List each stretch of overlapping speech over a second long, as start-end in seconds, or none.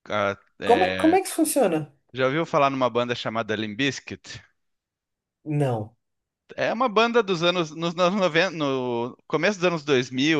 none